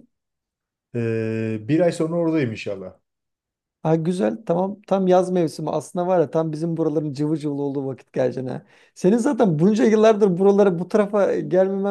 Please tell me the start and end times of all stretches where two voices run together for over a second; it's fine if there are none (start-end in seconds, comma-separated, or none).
none